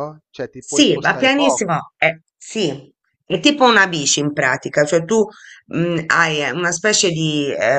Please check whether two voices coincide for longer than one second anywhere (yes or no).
yes